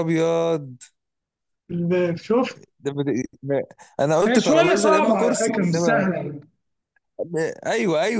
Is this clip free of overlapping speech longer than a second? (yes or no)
no